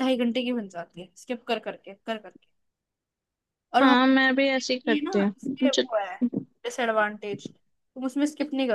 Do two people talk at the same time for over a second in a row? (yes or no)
yes